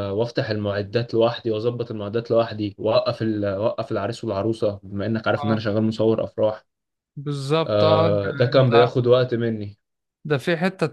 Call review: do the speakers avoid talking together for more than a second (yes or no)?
no